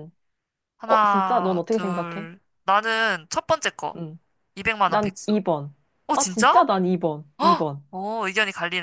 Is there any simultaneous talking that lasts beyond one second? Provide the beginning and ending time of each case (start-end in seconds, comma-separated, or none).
0.9-2.3